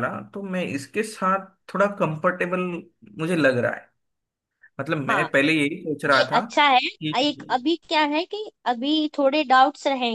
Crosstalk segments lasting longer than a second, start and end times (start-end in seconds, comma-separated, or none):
none